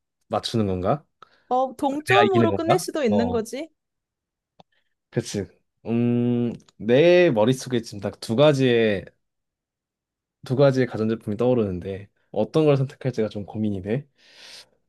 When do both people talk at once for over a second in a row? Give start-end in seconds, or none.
2.1-3.4